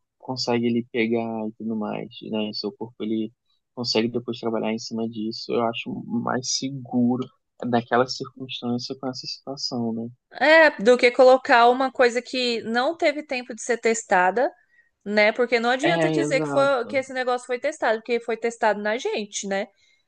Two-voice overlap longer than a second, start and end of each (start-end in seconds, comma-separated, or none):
15.8-17.0